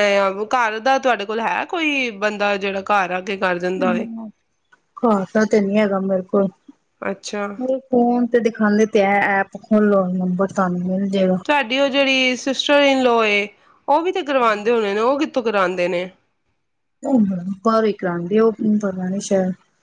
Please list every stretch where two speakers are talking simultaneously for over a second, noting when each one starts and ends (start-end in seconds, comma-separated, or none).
none